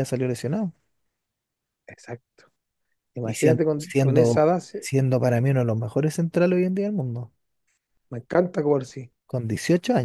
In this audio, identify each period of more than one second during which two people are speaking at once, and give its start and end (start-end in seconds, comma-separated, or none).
3.2-4.9